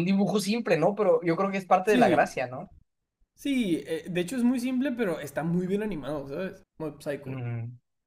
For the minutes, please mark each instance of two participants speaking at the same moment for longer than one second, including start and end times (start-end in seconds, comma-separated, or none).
none